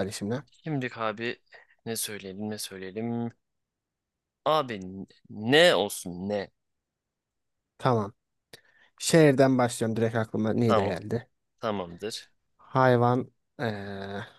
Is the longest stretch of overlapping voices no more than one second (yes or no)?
yes